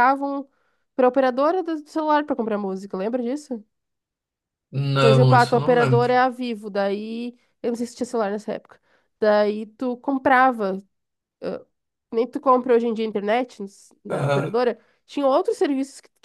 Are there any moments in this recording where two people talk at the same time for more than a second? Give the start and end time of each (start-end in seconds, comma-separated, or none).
5.0-6.2